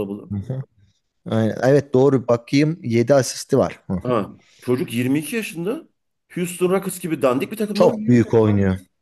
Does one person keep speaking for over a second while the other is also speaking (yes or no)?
no